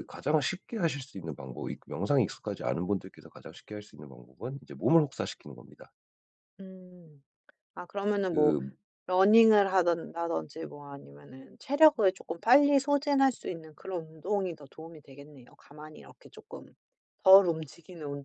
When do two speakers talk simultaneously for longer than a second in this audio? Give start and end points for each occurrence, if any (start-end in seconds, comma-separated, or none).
none